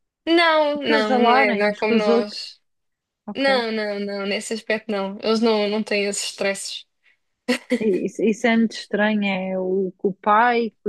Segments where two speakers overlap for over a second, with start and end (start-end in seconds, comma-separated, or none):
0.8-2.4